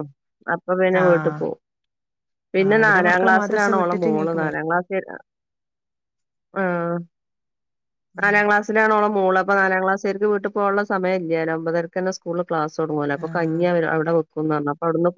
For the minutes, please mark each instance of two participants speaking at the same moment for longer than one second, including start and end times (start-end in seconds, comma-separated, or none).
2.6-4.6